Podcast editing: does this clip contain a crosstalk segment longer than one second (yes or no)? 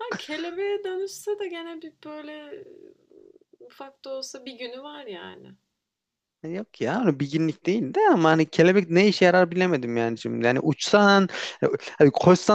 no